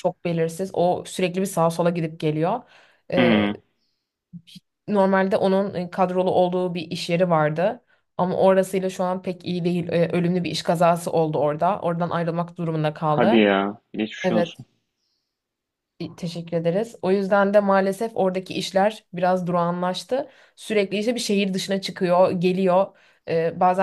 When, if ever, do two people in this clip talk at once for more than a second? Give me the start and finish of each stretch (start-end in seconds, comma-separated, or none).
none